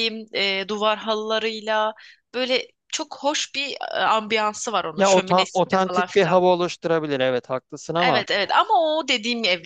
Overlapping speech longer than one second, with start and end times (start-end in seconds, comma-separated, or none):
5.0-6.4